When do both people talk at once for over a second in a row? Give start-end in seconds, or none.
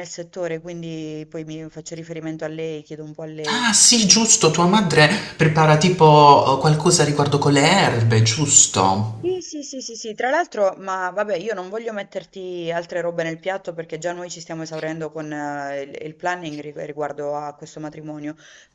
none